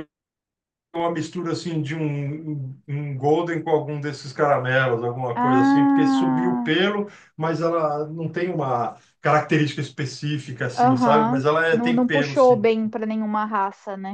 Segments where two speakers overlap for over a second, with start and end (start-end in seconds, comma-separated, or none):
5.4-6.7, 10.8-12.7